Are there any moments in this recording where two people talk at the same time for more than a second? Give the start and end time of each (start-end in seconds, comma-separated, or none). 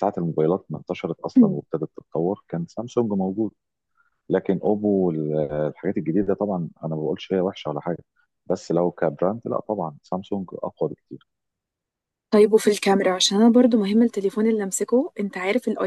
none